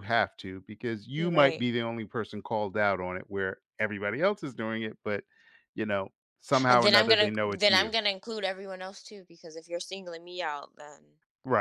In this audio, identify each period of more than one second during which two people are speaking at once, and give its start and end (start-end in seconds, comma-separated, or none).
6.7-7.9